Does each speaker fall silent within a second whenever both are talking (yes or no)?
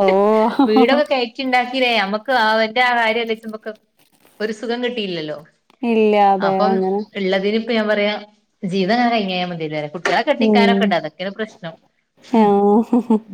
yes